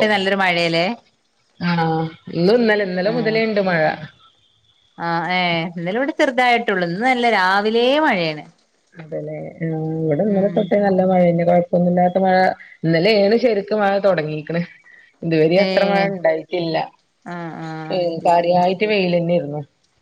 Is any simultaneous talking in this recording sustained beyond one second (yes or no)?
no